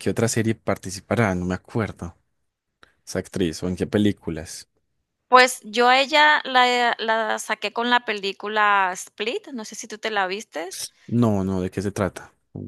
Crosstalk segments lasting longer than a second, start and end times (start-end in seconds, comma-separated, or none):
none